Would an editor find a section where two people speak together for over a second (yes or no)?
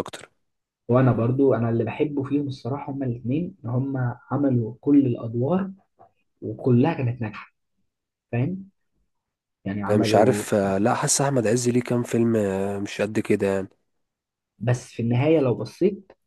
no